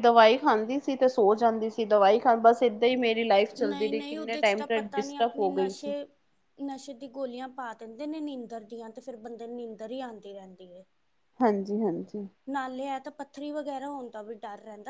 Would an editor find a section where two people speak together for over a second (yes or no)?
yes